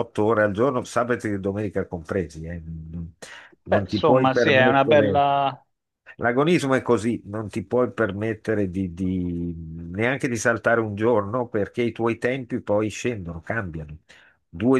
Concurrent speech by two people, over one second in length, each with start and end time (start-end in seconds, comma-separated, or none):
3.6-5.3